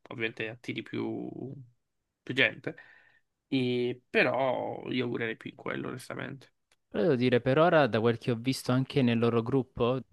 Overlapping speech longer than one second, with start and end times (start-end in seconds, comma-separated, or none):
none